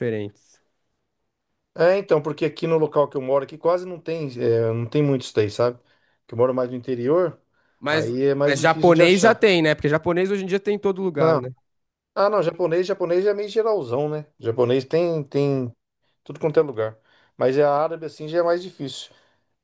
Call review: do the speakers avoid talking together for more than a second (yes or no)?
no